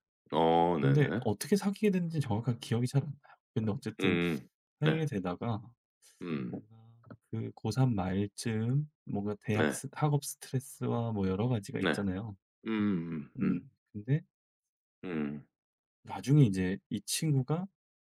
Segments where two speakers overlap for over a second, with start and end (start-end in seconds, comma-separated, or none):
none